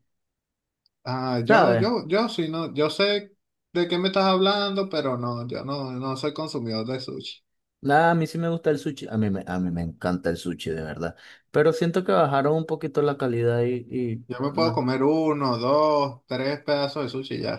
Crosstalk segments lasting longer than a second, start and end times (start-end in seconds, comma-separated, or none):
none